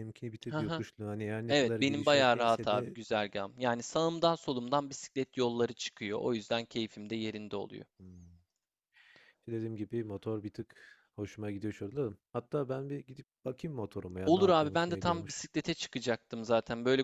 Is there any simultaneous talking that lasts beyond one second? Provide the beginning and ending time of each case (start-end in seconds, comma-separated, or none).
1.5-3.0, 14.2-15.5